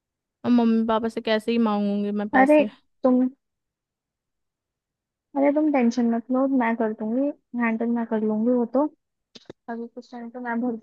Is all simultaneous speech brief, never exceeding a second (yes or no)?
yes